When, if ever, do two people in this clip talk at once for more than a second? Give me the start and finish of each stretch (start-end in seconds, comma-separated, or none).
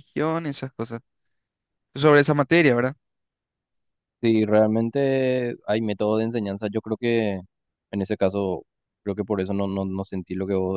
none